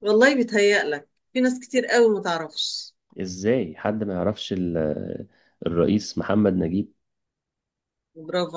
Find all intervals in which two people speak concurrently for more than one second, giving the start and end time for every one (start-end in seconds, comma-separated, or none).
none